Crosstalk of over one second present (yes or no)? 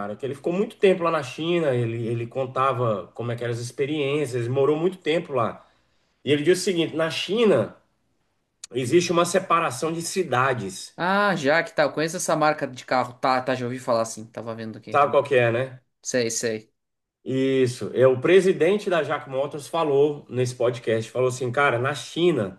no